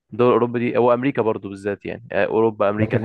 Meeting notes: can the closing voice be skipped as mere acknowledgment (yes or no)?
no